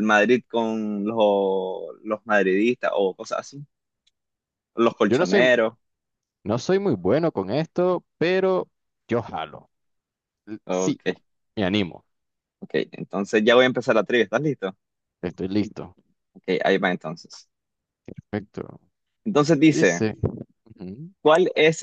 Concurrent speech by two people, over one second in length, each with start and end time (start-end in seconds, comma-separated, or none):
none